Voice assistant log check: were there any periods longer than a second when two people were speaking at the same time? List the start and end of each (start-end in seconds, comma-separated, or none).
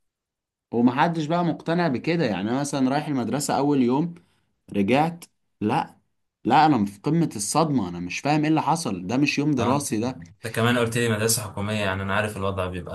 none